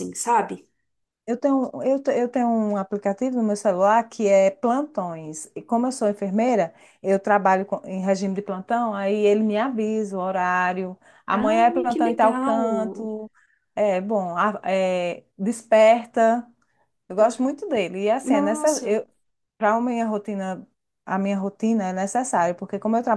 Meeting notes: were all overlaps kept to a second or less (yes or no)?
no